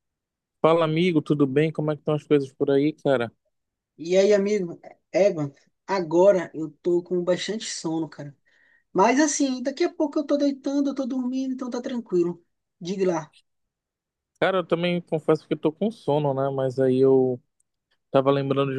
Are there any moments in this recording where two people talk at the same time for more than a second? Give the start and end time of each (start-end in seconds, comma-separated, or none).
none